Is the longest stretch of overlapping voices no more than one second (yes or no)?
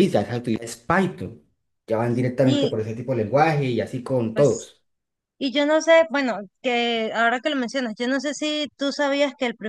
yes